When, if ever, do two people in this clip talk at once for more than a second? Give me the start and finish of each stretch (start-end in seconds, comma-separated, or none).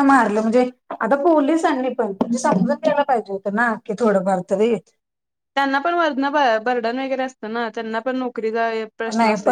none